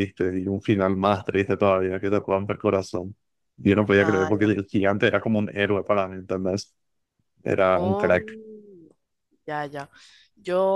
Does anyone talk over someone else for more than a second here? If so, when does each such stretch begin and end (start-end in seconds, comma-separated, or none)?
none